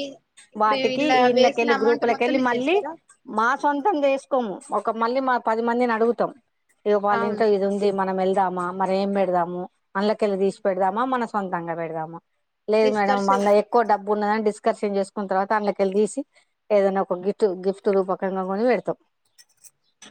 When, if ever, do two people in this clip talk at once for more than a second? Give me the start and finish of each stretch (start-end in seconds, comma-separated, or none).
0.6-2.8